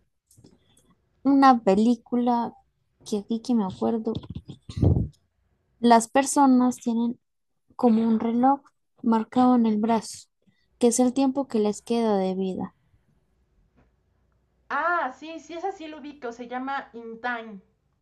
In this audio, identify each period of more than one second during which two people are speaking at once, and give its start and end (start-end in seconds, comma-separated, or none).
none